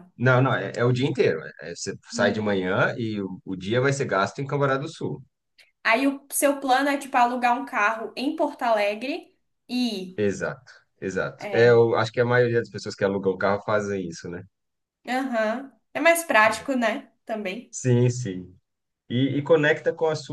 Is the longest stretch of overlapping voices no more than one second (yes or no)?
yes